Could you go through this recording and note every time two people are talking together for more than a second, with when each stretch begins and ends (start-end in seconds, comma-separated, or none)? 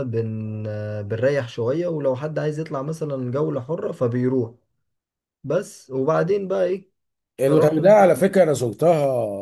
none